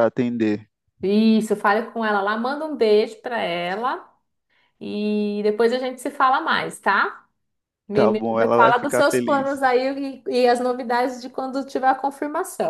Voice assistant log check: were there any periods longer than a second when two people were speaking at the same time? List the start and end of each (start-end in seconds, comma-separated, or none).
7.9-9.6